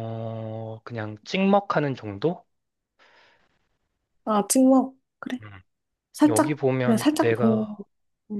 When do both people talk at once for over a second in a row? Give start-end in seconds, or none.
6.3-7.7